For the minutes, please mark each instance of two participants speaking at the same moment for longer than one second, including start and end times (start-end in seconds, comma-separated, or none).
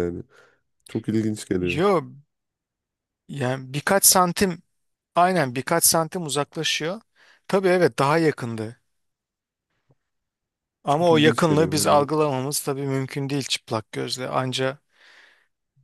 10.9-12.1